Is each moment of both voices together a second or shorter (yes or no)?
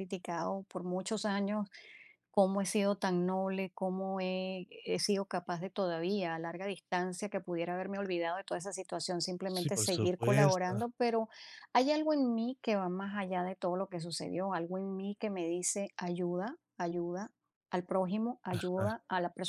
no